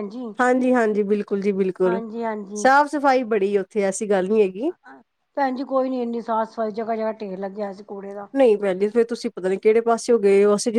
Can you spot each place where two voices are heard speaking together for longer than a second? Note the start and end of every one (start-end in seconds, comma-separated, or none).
none